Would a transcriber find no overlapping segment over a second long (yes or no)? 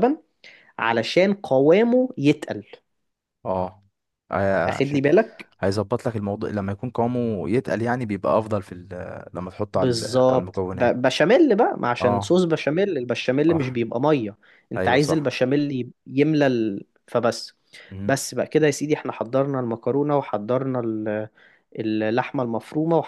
no